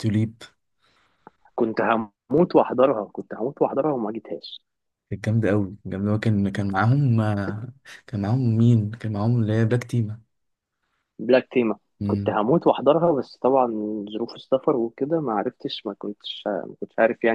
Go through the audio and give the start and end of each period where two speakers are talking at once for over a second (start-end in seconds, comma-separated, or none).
none